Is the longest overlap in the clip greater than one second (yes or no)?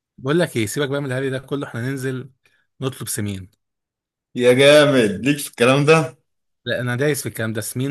no